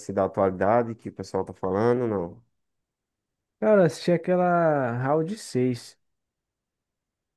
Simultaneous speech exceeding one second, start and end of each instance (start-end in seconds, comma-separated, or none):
none